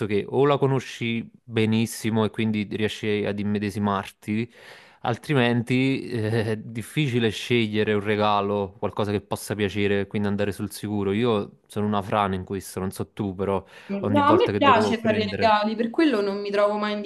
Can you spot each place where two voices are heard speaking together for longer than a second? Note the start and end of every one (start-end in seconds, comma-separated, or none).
14.0-15.5